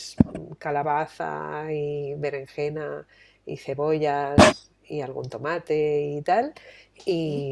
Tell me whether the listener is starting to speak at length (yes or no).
no